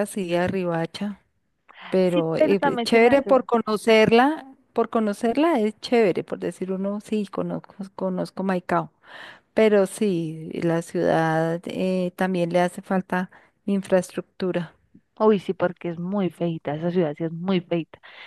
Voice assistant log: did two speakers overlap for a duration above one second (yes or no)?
yes